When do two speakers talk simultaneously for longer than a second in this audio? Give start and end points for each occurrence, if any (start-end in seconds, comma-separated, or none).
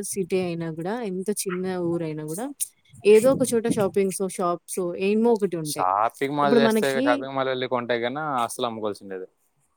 none